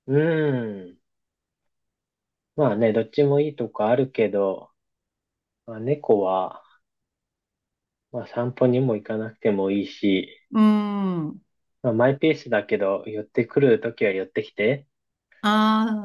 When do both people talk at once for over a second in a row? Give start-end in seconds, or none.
none